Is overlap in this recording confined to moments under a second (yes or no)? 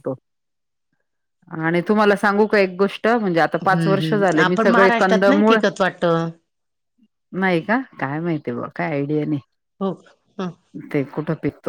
no